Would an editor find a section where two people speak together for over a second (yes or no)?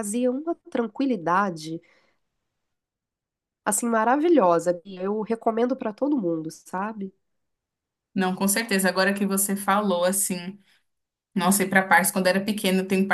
no